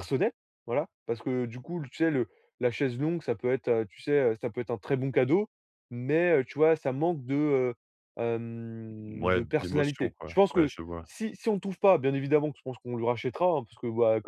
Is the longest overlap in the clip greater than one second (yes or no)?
yes